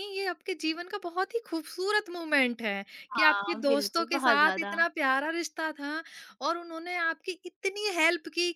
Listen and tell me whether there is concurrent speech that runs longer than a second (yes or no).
yes